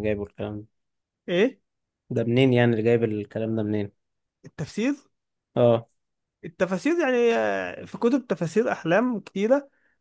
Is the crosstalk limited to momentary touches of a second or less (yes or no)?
yes